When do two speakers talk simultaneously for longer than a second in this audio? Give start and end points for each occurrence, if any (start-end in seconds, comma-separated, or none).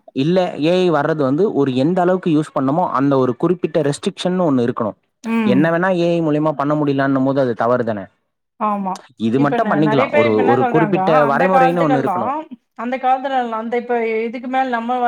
9.4-12.3